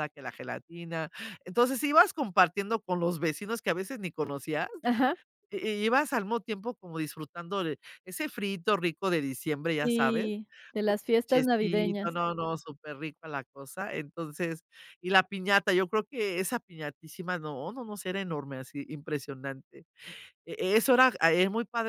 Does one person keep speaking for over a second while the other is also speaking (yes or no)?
yes